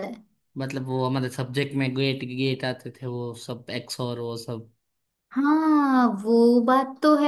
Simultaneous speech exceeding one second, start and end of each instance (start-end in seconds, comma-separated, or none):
none